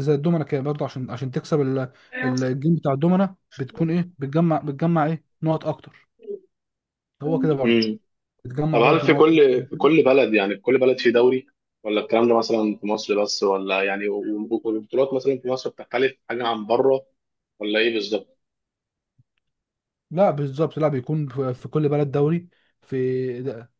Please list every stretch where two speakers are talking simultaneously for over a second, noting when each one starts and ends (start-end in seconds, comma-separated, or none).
none